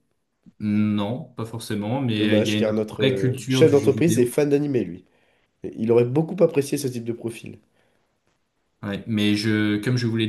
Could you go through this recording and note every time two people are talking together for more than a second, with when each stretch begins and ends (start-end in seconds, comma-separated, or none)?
2.2-4.3